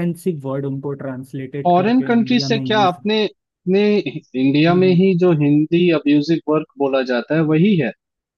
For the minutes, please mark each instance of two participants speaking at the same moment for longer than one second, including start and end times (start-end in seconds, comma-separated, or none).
1.7-3.0